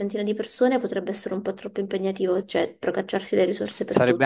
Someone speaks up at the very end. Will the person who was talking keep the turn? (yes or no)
no